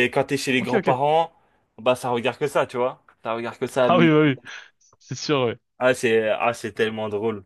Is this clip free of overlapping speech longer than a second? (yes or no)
yes